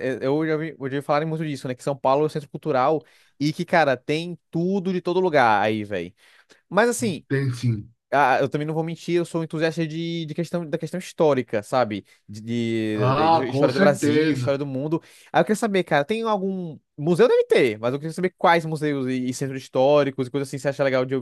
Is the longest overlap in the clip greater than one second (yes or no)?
yes